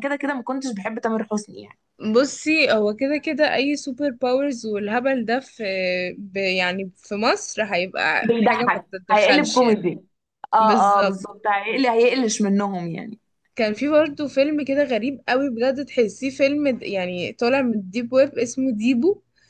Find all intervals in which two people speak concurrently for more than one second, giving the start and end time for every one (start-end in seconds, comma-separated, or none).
8.2-9.8